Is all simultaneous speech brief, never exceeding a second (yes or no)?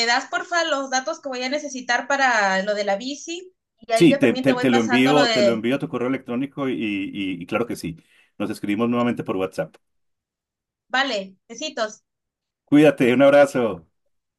no